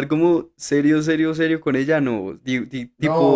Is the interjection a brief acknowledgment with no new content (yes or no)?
no